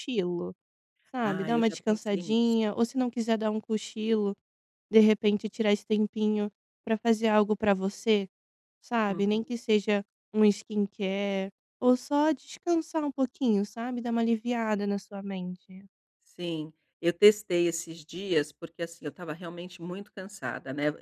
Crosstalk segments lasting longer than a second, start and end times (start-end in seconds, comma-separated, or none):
1.2-2.5